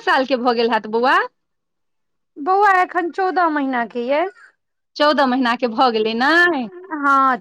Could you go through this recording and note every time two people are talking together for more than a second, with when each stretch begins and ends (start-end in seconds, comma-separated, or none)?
none